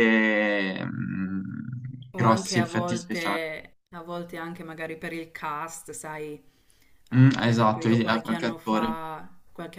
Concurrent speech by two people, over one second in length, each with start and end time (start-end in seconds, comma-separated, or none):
2.1-3.4, 7.2-9.0